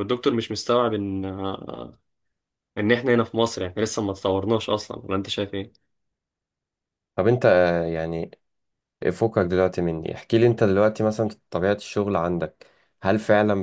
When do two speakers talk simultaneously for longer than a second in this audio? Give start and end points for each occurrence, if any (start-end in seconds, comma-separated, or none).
none